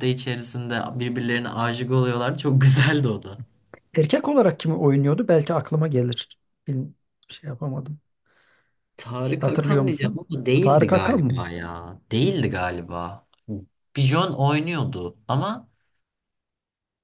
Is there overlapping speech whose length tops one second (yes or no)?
yes